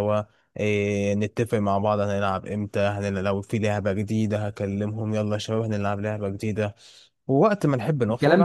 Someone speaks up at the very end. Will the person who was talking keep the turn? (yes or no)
no